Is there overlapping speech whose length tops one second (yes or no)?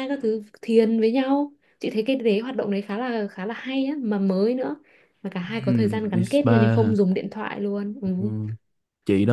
yes